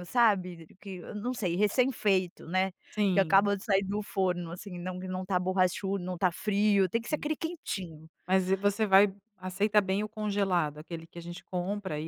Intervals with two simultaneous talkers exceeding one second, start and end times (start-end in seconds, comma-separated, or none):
none